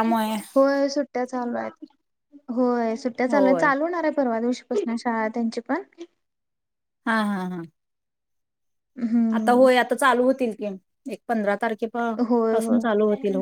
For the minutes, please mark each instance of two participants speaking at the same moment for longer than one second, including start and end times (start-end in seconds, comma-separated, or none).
none